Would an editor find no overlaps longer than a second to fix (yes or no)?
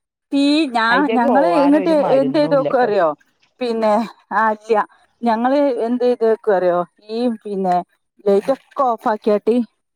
no